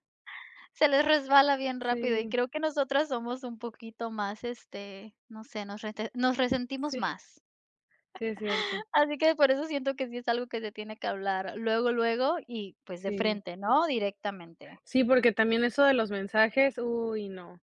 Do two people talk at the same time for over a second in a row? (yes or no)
no